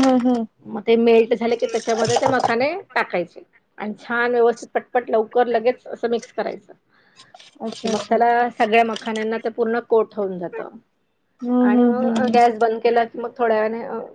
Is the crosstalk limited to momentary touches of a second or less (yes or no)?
yes